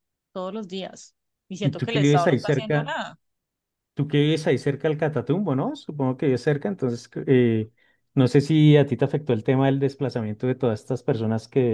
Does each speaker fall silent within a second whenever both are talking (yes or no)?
no